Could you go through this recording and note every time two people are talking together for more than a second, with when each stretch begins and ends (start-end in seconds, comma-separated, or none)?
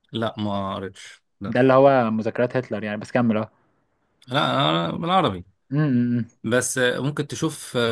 none